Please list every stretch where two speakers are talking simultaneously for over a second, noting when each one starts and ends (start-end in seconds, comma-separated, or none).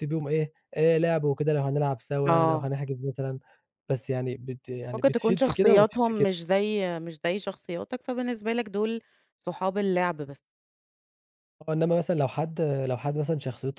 4.9-6.3